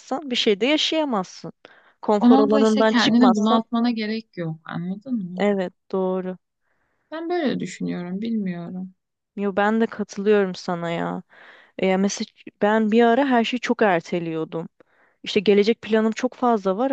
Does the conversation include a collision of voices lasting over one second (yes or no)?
yes